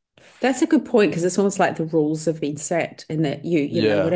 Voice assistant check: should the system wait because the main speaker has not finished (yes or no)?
yes